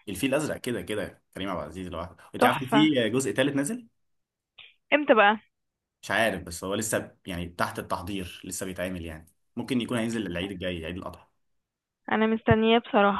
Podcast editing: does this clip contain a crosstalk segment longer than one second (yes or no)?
no